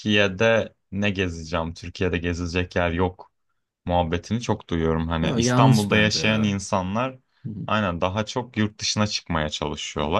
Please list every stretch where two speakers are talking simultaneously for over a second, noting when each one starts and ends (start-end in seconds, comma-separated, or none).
5.2-6.6